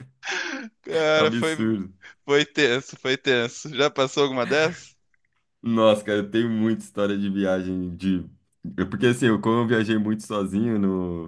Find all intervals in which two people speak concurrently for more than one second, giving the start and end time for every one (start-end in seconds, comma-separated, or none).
none